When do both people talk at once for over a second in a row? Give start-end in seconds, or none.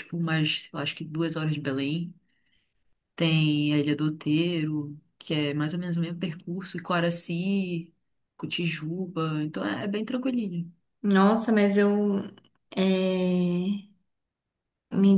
none